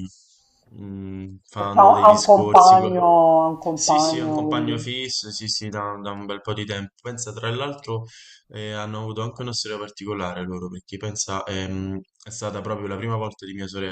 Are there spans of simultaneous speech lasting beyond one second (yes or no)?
yes